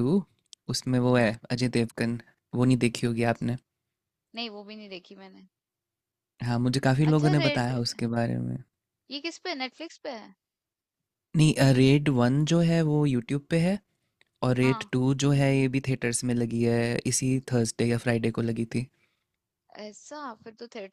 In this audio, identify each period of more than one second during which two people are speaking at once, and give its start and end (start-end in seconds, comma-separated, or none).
none